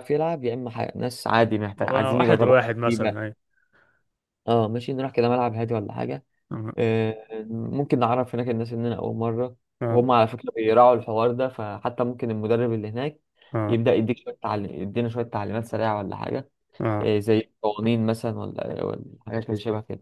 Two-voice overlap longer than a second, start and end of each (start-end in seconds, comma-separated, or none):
1.8-3.2